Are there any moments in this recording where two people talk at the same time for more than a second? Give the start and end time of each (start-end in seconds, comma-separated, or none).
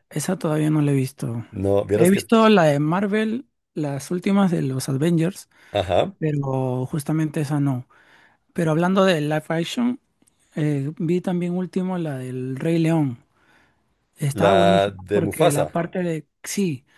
14.3-15.7